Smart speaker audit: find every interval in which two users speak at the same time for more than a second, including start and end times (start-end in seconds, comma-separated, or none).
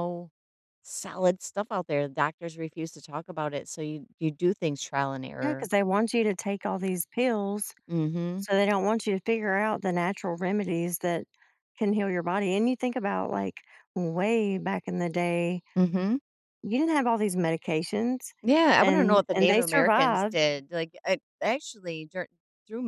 18.8-20.4